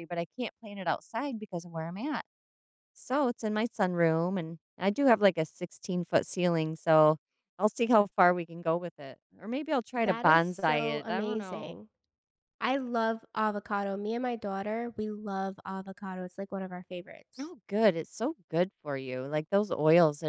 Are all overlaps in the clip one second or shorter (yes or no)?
no